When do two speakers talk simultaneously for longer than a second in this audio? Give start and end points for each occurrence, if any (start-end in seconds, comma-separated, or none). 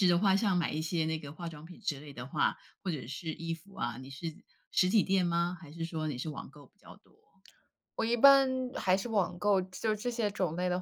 none